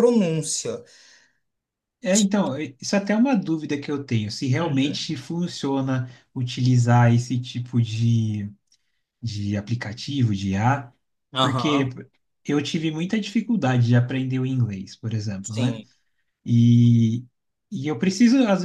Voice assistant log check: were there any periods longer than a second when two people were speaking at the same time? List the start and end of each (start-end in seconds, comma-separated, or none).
none